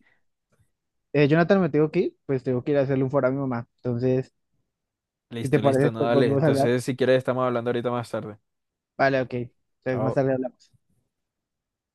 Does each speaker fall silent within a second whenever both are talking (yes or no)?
no